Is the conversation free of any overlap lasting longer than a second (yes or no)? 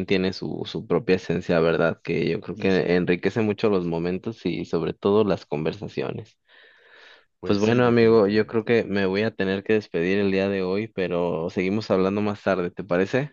no